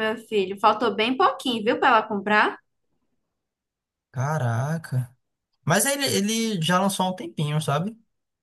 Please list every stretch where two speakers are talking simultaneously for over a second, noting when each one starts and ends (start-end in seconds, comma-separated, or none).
none